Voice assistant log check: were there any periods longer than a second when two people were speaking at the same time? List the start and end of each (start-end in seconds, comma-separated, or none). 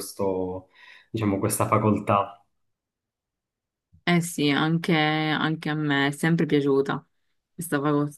none